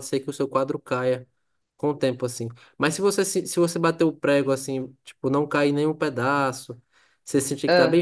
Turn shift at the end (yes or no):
no